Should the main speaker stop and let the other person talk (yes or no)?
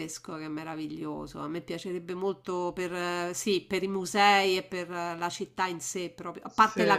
no